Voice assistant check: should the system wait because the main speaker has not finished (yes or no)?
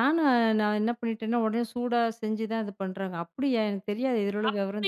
no